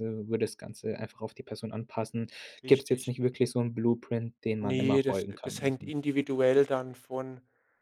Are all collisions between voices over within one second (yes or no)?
no